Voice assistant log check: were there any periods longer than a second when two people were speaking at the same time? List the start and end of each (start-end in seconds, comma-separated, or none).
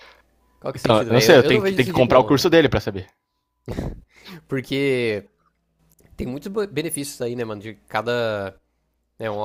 0.7-2.4